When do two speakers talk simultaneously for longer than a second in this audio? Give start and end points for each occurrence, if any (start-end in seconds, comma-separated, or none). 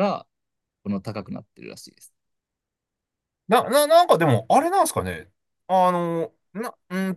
none